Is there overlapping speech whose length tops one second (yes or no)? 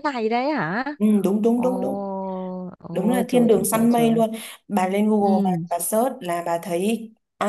yes